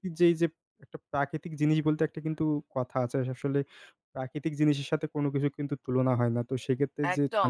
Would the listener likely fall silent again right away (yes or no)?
no